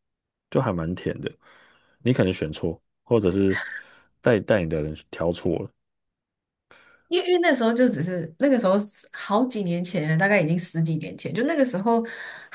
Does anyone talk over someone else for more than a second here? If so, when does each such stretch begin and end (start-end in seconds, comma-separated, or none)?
none